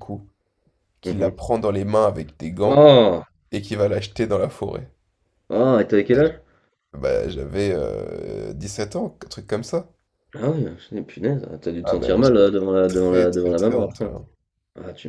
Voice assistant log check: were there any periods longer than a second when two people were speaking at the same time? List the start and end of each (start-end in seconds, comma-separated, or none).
12.9-14.1